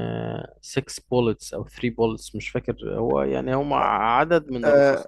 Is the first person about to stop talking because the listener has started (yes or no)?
yes